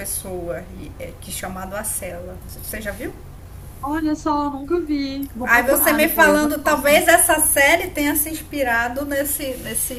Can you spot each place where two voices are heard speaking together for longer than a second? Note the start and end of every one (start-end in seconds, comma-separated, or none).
5.4-7.0